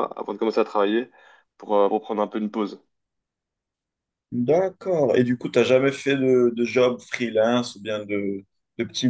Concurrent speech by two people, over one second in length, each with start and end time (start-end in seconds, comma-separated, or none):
none